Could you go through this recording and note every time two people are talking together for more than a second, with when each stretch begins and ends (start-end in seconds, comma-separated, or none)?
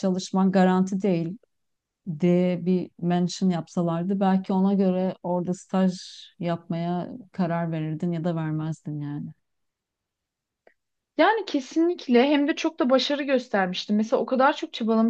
none